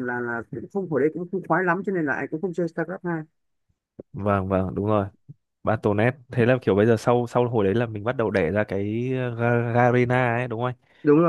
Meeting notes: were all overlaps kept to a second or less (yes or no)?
yes